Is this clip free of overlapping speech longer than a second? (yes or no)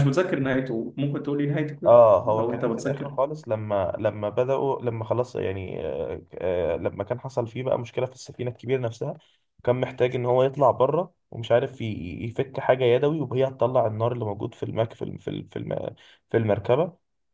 no